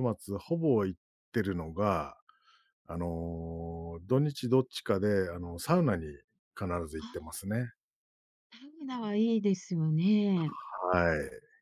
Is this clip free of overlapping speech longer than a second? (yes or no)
yes